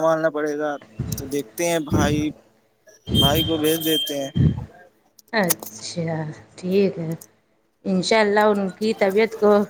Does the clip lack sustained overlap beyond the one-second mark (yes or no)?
yes